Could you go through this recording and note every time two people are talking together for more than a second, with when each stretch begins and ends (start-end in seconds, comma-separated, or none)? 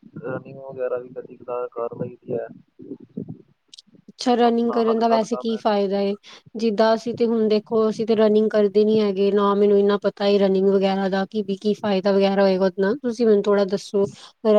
4.5-5.8